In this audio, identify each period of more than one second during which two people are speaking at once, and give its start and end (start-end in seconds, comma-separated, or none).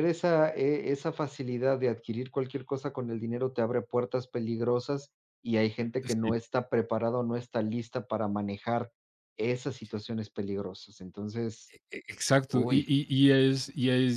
none